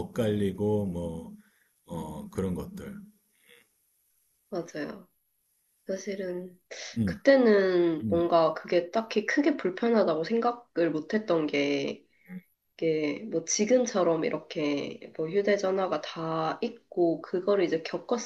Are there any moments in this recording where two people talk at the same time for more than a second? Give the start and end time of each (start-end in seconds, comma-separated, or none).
none